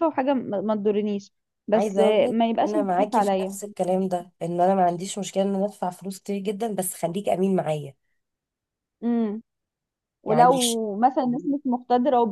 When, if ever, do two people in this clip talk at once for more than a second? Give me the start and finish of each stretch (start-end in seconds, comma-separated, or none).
1.7-3.6